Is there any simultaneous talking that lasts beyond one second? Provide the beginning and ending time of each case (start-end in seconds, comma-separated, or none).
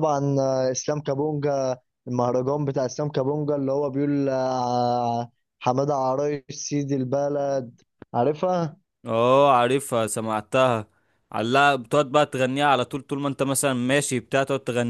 none